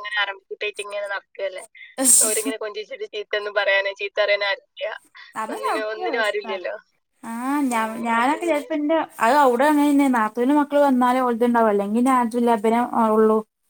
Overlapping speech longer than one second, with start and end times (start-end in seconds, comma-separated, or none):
none